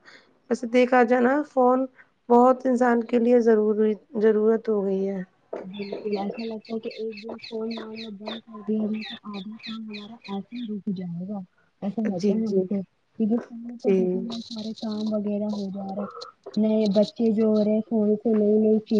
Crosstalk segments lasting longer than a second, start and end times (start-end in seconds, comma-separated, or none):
none